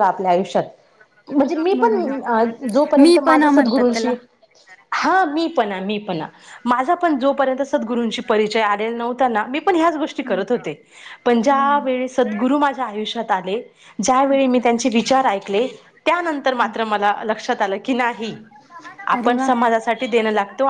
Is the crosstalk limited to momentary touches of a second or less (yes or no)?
no